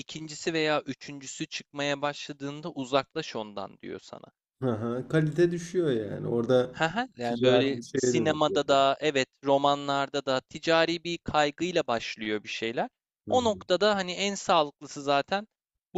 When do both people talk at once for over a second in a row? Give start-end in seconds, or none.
7.2-8.6